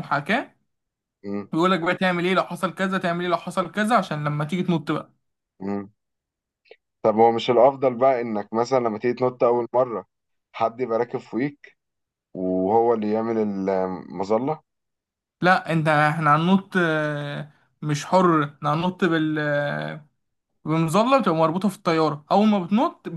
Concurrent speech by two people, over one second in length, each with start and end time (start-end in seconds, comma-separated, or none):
none